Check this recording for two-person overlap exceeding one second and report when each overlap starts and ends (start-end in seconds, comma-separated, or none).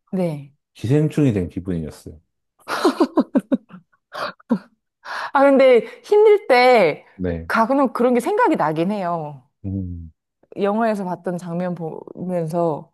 none